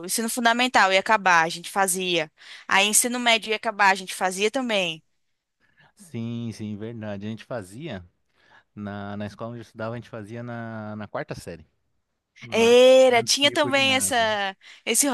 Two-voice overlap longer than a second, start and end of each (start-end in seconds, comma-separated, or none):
12.5-14.2